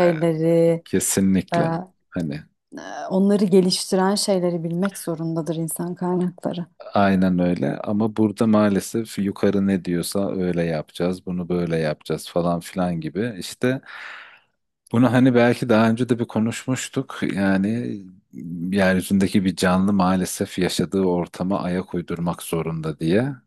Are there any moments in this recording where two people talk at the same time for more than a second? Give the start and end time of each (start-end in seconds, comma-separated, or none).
none